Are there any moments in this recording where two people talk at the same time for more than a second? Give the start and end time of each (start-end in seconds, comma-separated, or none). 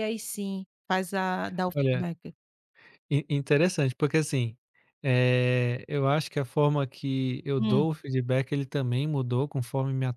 none